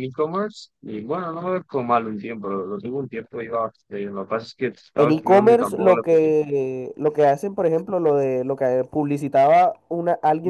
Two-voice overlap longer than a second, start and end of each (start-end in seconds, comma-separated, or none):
5.0-6.3